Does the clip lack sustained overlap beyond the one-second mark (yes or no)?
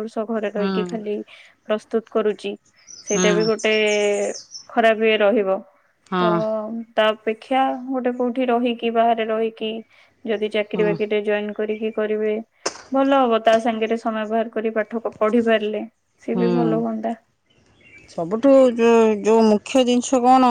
yes